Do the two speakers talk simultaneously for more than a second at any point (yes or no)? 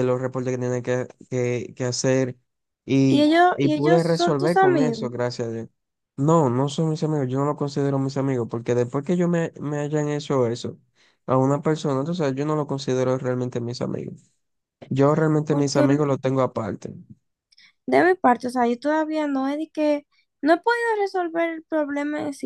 yes